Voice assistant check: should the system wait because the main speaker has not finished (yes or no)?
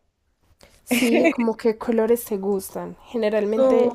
no